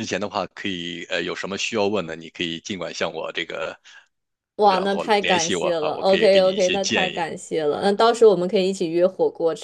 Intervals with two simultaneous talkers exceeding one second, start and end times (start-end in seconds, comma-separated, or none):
4.6-7.3